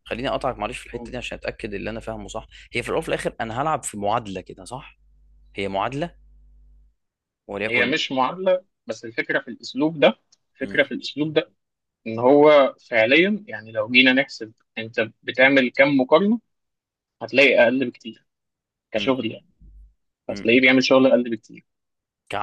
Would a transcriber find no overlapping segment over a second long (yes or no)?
yes